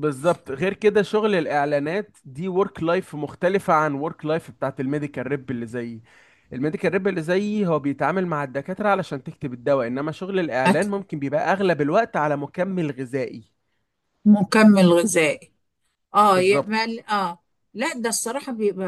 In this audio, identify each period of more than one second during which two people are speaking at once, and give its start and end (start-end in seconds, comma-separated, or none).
none